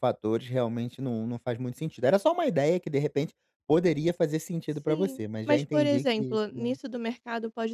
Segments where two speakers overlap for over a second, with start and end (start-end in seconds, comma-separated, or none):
4.7-6.8